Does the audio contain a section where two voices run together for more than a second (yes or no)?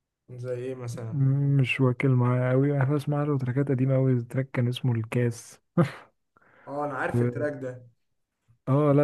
no